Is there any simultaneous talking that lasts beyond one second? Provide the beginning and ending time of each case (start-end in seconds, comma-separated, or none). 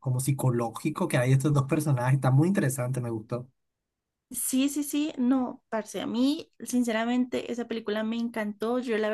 none